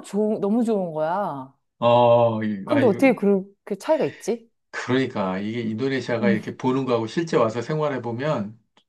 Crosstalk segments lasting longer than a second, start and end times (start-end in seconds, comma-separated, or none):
none